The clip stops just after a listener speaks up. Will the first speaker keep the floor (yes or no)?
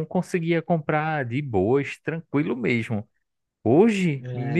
yes